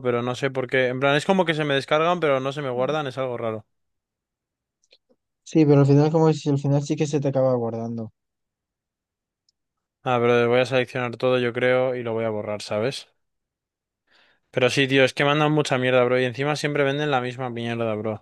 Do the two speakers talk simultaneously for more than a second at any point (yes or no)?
no